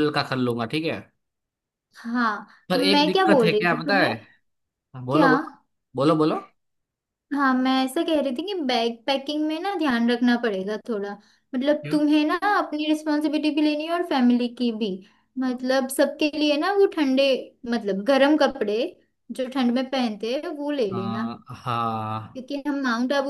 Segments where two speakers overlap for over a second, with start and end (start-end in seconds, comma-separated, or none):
2.7-4.1